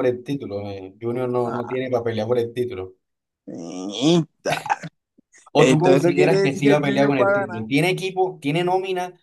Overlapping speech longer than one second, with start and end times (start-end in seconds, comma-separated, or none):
5.5-7.6